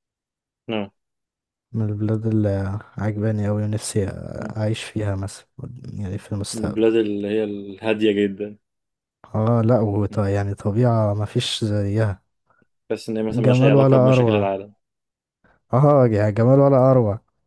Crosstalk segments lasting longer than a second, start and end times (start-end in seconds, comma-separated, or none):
13.3-14.5